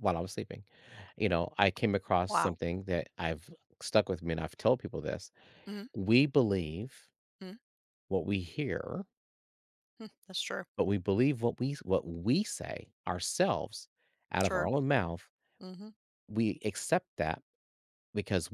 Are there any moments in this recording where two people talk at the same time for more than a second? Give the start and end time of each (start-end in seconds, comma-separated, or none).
none